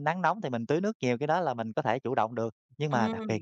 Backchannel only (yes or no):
yes